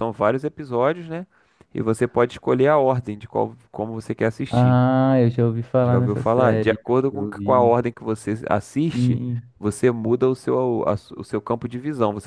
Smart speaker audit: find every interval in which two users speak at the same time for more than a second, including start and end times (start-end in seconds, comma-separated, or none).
5.8-7.8